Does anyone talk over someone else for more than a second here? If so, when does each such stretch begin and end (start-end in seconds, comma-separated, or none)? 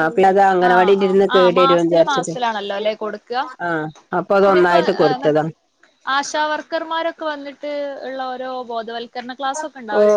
0.7-2.3